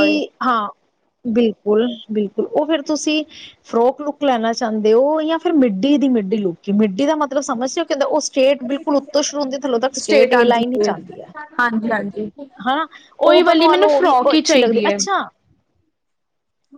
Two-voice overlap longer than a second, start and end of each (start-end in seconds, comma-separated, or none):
13.5-15.0